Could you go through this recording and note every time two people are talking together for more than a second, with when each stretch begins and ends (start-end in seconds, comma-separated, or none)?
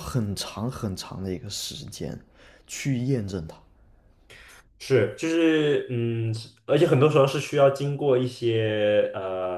none